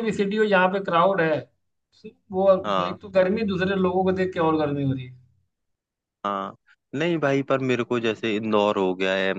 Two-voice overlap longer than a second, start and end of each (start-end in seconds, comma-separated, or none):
none